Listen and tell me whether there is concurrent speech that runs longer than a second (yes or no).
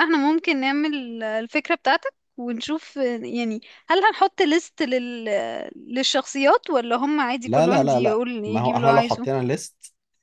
yes